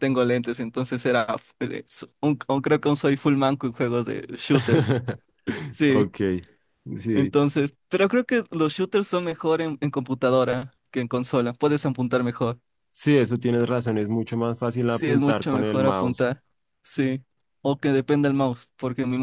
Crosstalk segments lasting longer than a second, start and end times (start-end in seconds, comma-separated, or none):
14.8-16.3